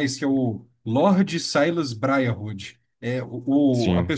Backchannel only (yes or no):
yes